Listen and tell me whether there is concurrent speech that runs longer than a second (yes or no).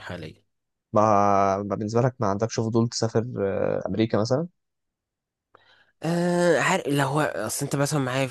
no